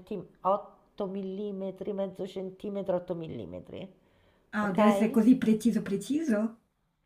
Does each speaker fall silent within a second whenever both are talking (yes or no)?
yes